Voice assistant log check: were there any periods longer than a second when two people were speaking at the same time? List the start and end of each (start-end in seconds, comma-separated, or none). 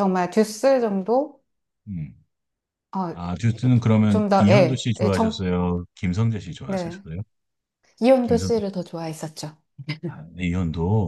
4.1-5.5